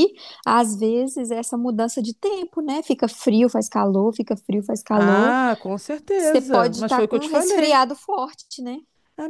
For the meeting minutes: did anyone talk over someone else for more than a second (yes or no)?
yes